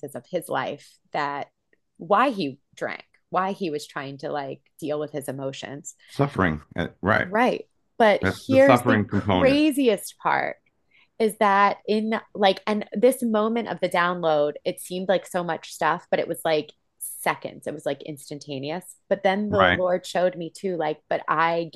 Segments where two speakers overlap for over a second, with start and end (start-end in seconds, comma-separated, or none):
8.2-9.6